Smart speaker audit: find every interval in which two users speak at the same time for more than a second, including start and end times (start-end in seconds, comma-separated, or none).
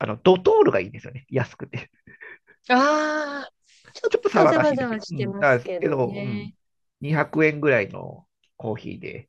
4.1-6.5